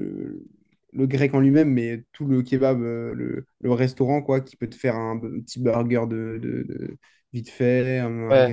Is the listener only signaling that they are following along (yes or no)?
no